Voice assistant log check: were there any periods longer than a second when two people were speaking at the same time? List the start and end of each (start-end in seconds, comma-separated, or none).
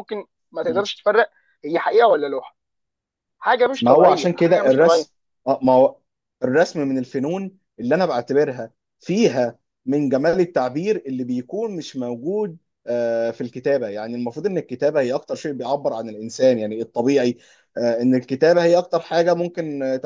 3.8-5.1